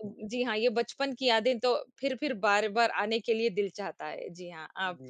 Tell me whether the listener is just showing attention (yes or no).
no